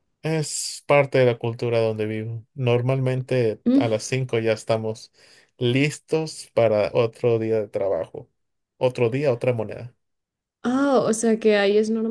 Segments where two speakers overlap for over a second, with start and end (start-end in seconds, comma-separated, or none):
none